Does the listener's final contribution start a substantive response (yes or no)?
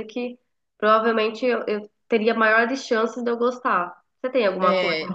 yes